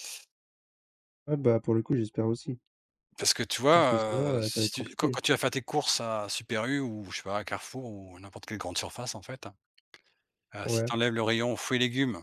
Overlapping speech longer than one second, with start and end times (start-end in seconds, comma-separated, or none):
3.7-5.2